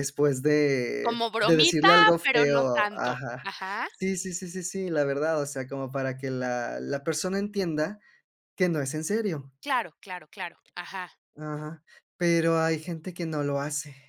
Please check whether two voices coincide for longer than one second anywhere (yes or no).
yes